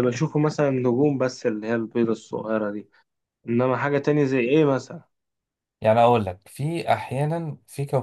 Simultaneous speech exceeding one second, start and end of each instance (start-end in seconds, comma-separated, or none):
none